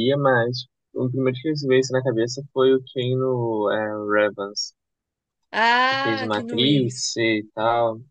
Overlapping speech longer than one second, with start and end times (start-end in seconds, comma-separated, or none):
5.9-7.2